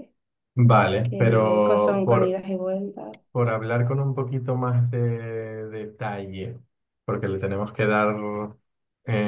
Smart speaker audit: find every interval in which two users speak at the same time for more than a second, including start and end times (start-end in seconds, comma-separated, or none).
1.0-2.4